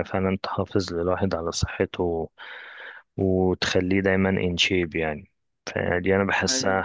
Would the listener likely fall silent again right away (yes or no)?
yes